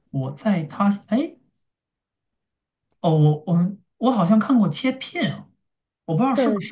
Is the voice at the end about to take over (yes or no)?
no